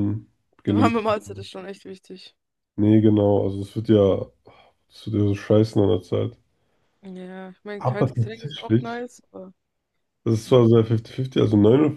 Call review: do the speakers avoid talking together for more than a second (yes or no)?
no